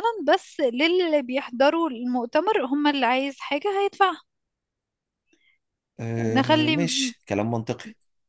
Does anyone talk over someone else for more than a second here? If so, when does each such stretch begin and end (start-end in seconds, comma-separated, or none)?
none